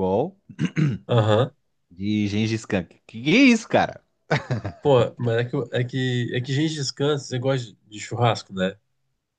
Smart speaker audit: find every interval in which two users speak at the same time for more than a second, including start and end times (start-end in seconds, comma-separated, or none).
none